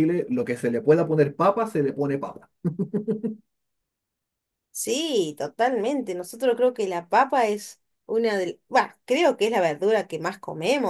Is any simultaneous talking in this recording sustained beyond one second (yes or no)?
no